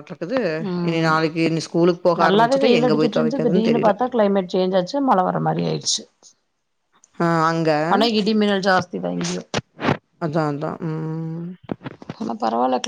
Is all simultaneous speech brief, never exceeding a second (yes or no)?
no